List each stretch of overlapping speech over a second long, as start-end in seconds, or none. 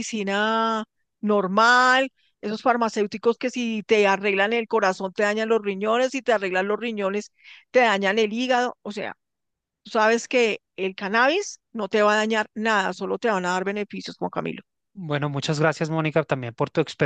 none